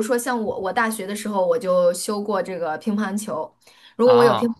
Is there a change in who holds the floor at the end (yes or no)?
no